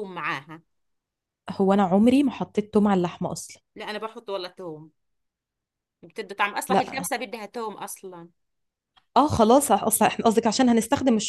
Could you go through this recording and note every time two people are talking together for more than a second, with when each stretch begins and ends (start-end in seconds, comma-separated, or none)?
none